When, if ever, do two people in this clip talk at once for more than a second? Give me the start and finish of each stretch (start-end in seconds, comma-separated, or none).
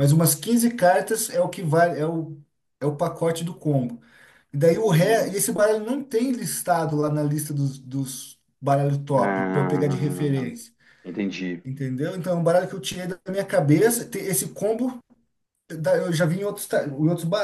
9.1-10.5